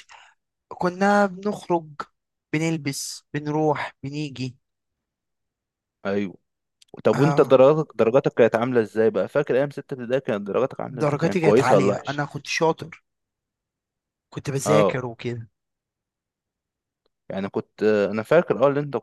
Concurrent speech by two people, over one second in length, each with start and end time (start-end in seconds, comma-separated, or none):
10.9-12.2